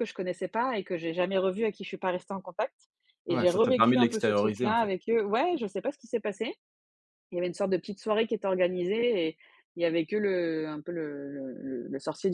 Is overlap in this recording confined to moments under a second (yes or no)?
no